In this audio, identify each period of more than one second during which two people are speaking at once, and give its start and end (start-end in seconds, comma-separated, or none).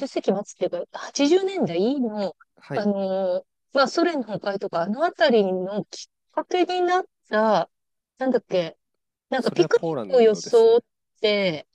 9.4-10.8